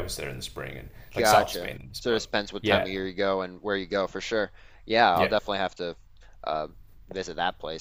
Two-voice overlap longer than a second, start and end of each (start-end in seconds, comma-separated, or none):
1.2-2.9